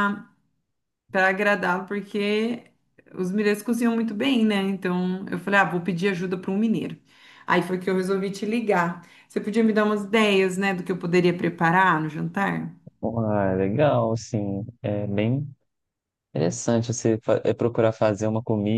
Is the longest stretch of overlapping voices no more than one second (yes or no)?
yes